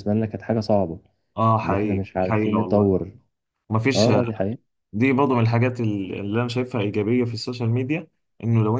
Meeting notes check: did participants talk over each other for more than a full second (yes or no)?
yes